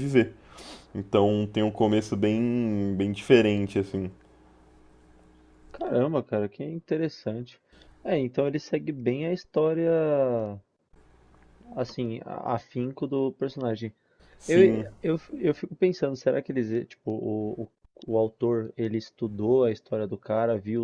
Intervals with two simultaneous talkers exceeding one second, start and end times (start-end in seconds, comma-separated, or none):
none